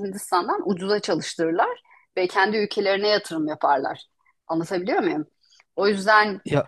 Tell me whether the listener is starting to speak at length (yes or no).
no